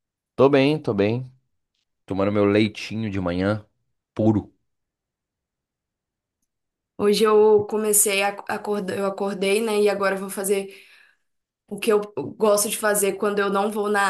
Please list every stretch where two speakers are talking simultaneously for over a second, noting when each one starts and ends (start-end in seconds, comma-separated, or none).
none